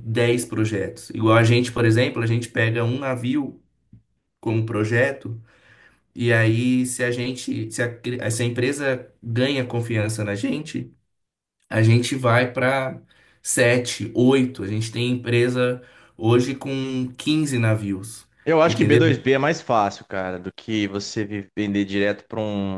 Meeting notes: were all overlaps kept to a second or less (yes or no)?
yes